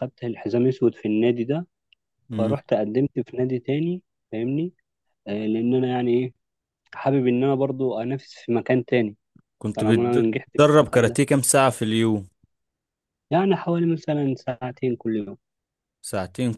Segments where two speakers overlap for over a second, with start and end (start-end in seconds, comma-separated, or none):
9.7-11.2